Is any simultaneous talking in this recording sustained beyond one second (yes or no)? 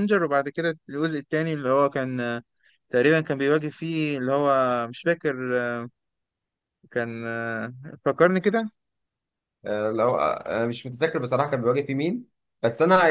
no